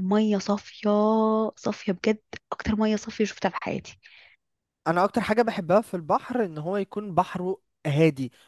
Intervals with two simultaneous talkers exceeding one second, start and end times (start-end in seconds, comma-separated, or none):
none